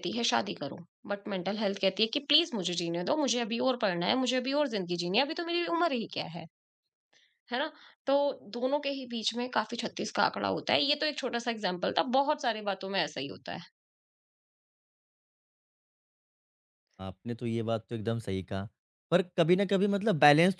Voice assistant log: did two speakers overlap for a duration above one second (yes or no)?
no